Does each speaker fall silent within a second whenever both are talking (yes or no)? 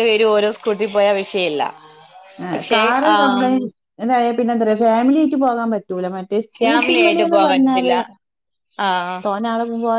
no